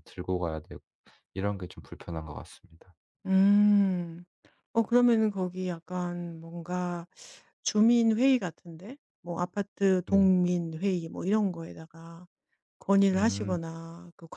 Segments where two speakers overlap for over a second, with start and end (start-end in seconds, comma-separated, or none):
none